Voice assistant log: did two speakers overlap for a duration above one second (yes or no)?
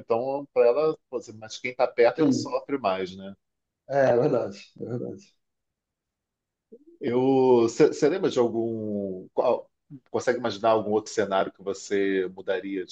no